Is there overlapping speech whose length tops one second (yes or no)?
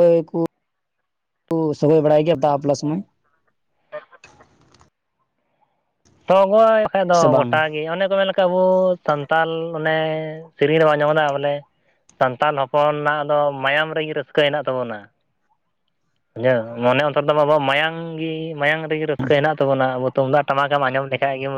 no